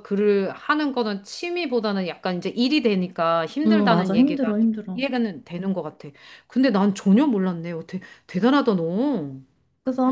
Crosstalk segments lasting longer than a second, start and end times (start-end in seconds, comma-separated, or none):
3.7-5.1